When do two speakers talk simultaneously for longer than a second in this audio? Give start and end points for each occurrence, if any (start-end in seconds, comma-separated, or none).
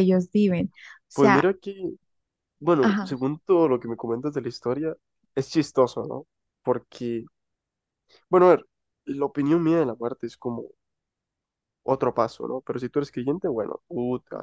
none